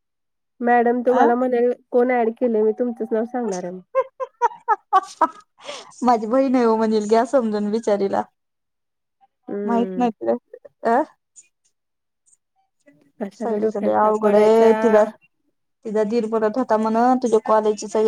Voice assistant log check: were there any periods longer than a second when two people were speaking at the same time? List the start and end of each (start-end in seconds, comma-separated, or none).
13.4-14.8